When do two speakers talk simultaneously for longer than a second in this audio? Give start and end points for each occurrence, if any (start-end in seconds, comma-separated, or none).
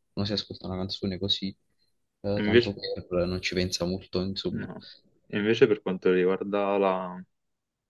none